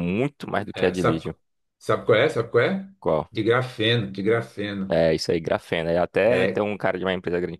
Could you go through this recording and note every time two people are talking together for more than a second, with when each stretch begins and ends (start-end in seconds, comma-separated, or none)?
none